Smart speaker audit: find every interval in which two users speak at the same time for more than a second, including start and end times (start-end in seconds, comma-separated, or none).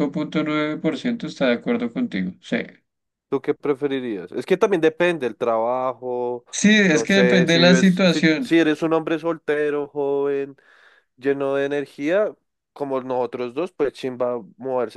6.8-8.5